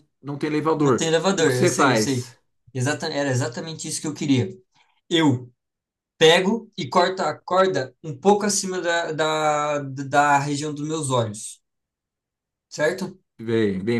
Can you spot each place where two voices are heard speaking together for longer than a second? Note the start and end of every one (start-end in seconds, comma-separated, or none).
0.8-2.3